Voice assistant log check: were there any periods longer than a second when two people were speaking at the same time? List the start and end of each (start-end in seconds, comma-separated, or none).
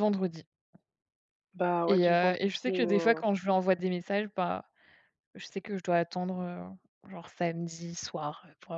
1.9-3.2